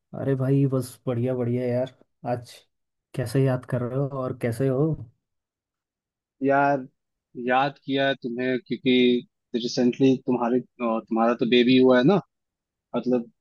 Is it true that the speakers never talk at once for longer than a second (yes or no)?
yes